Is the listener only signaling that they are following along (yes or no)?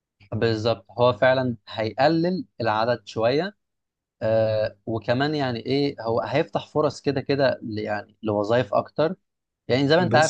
yes